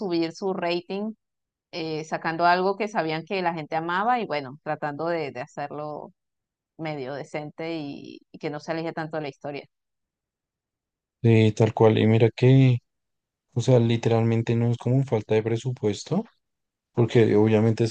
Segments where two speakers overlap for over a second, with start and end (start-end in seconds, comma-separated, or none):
none